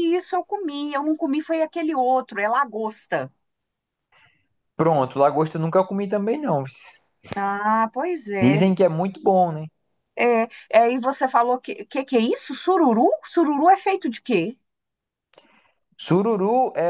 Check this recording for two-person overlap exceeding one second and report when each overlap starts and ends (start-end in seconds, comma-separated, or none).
none